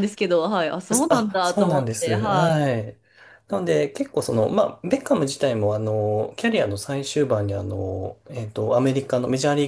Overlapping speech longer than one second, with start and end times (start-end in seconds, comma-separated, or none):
1.1-2.8